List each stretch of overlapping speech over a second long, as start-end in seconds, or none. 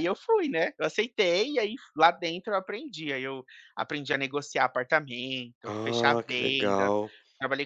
5.6-6.9